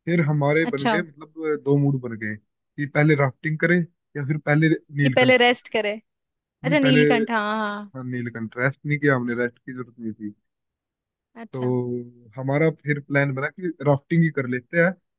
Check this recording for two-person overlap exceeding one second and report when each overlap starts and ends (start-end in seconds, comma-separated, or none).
none